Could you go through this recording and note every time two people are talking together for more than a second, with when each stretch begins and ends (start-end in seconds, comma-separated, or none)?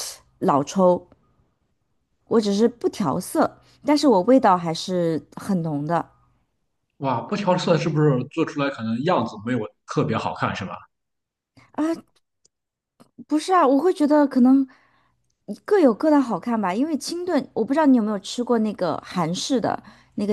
none